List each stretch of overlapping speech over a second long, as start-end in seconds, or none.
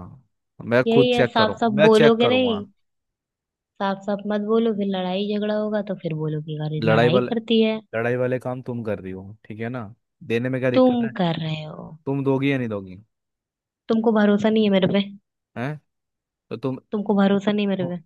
0.9-2.6